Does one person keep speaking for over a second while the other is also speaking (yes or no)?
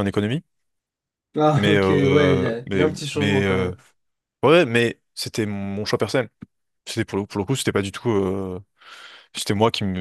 yes